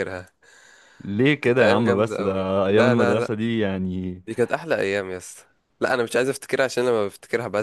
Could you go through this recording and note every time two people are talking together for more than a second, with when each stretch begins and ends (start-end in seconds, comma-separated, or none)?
1.4-3.3